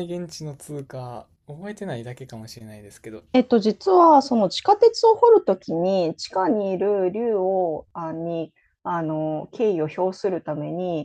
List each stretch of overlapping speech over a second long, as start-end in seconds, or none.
none